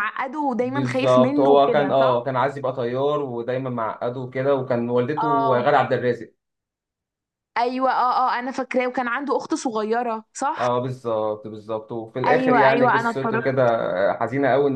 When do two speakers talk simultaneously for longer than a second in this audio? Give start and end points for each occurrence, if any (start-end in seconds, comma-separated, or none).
0.6-2.3, 12.2-13.6